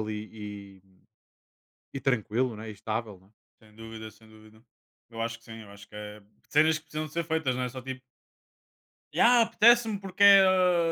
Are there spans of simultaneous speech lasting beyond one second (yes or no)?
no